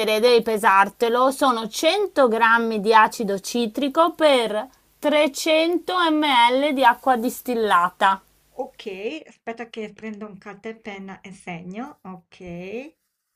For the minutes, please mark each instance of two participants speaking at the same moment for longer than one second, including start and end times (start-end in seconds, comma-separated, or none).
none